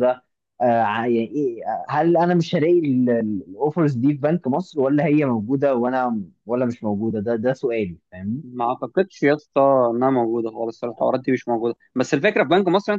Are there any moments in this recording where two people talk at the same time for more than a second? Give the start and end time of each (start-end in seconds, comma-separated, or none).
none